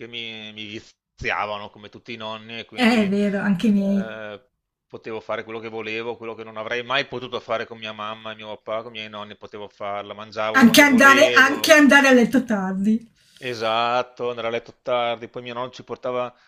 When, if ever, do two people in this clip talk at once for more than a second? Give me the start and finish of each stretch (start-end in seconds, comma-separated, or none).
2.8-4.1, 10.5-11.8